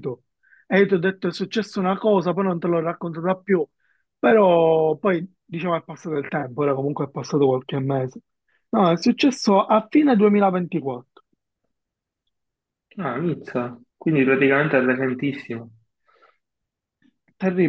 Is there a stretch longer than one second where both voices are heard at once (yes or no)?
no